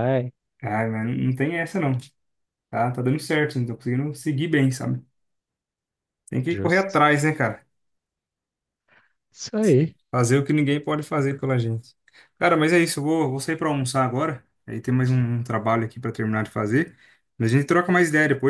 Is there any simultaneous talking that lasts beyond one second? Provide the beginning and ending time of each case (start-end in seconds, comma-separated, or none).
none